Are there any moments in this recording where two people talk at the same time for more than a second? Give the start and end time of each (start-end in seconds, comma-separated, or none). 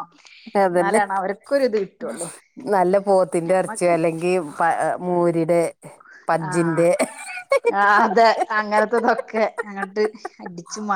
none